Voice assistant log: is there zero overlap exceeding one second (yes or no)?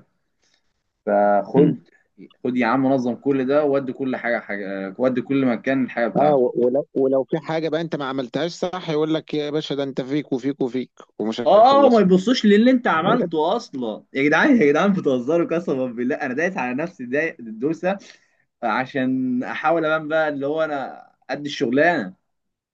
yes